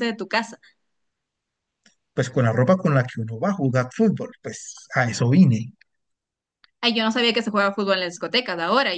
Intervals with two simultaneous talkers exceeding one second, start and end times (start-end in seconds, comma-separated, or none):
none